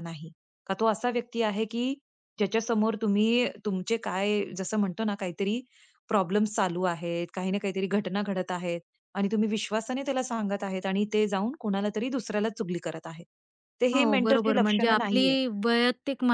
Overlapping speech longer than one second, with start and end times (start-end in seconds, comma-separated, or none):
13.9-15.3